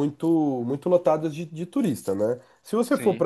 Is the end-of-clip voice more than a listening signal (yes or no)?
no